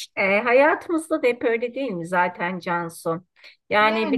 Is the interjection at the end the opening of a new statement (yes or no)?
no